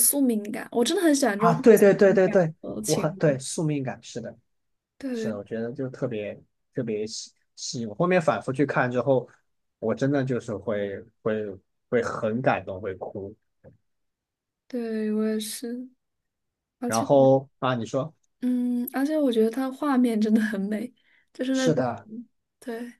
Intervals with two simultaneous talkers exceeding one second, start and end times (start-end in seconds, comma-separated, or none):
1.4-3.4